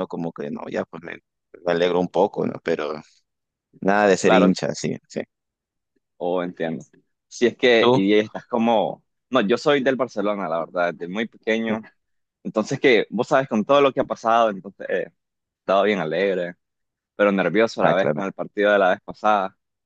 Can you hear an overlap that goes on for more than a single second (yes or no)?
no